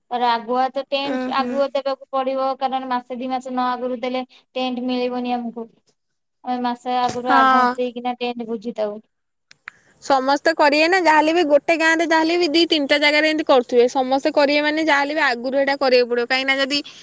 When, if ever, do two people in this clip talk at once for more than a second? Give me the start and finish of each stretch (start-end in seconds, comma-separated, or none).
none